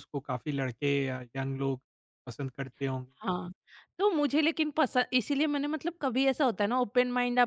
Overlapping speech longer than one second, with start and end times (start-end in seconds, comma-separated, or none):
none